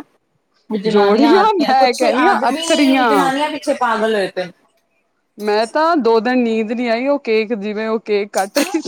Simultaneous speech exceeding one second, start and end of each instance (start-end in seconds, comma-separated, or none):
0.9-3.1